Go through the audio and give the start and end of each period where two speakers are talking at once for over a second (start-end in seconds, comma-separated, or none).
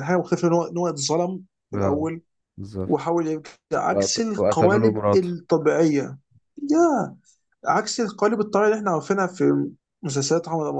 3.9-5.4